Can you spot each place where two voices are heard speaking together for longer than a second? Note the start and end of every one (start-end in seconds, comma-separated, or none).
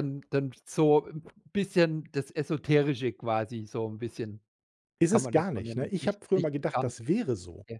5.1-6.9